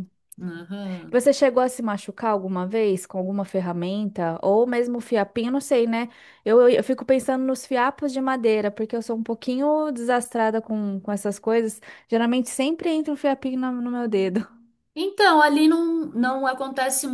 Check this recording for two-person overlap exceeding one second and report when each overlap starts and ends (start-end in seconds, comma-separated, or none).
none